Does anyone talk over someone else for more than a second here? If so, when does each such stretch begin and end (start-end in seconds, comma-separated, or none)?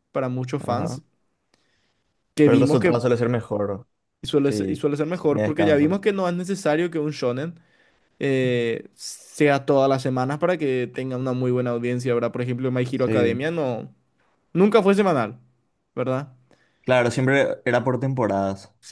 4.4-6.0